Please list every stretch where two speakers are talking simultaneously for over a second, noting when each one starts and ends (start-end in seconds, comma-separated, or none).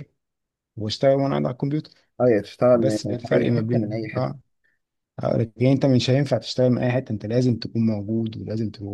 2.7-4.3